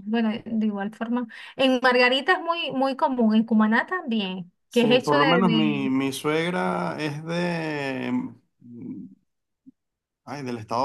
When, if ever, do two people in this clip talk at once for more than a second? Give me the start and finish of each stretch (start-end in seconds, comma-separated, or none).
4.7-5.9